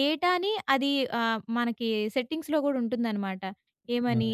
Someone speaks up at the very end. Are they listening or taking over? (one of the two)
listening